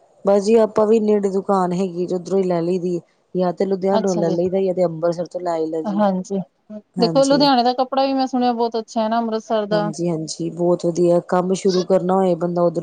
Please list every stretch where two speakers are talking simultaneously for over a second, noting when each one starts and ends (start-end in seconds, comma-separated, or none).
none